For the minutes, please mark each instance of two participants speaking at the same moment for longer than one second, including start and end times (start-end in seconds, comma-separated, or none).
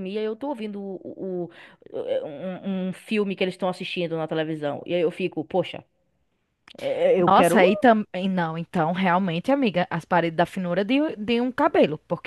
none